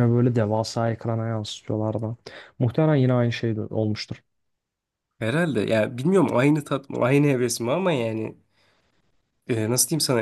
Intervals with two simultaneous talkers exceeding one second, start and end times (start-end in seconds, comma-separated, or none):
none